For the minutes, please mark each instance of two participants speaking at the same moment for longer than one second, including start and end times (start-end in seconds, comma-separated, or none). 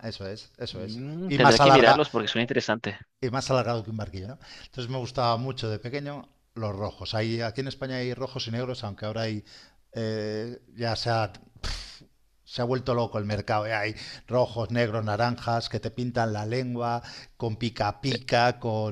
0.7-2.1